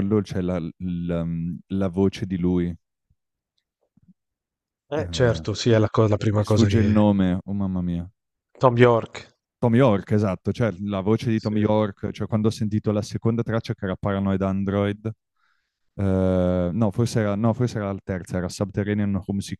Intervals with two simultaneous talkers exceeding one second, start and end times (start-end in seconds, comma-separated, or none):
none